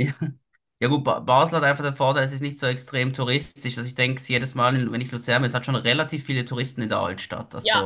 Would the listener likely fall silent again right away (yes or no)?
no